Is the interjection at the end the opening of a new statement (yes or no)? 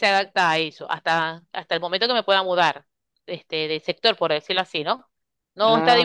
no